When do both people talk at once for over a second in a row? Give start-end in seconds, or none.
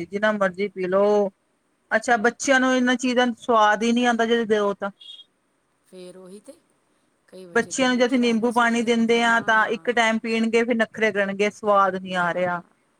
7.5-9.9